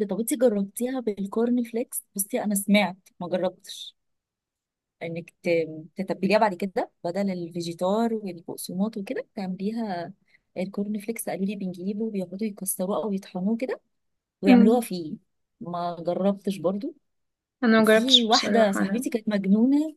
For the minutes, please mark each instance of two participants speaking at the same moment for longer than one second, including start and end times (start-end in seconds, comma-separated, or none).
17.8-19.0